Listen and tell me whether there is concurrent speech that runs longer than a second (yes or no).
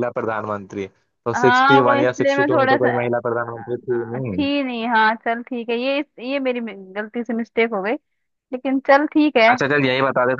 yes